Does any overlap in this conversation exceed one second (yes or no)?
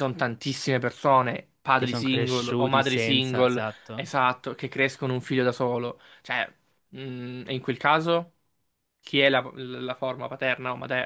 yes